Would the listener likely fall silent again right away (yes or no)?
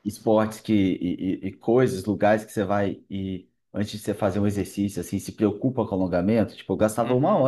no